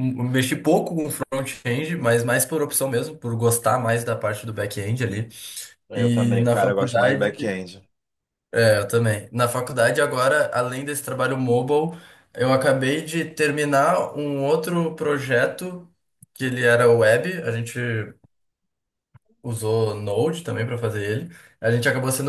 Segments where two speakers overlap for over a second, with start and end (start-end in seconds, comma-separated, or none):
6.0-7.6